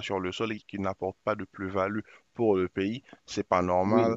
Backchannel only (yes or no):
yes